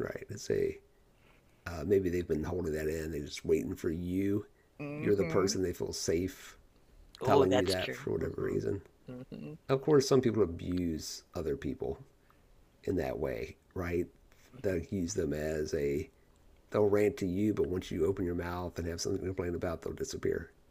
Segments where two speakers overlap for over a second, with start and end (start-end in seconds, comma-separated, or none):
7.2-8.6